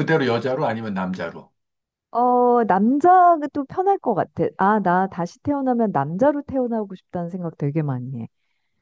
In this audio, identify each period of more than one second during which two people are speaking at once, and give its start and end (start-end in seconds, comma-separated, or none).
none